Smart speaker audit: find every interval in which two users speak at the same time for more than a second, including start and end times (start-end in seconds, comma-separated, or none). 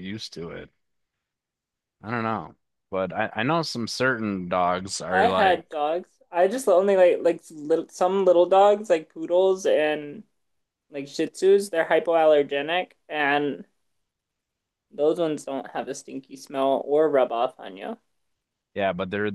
none